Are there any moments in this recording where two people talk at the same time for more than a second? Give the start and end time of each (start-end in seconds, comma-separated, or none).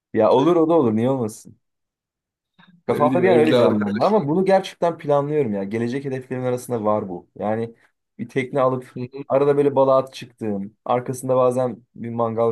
2.9-4.2